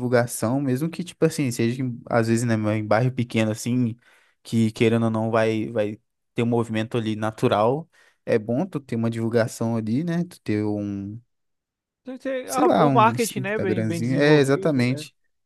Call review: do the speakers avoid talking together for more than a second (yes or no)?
no